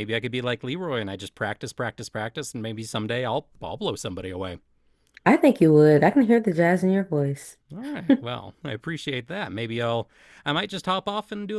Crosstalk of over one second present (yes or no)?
no